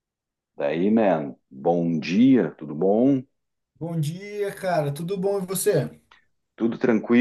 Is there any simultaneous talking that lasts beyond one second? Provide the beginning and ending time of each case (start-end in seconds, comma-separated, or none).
none